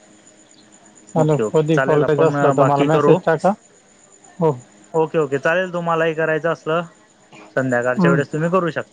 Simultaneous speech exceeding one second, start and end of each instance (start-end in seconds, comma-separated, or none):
1.2-3.2